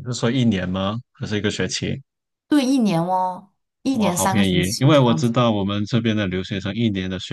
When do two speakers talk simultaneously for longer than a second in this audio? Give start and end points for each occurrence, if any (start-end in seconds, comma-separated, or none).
3.9-5.3